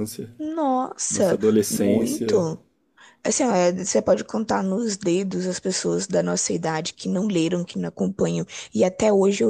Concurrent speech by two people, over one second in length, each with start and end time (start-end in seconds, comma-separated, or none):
1.1-2.5